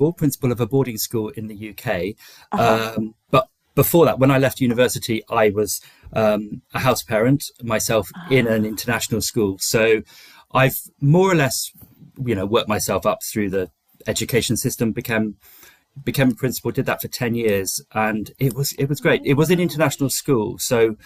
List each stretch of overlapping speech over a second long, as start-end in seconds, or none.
19.0-20.3